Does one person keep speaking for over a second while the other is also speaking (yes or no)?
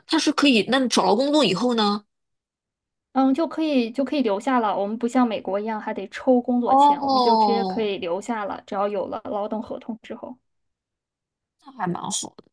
yes